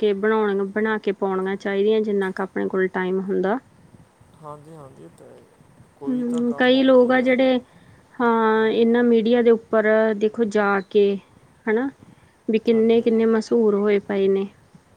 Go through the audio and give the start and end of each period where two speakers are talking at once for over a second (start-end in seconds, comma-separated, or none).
6.1-7.5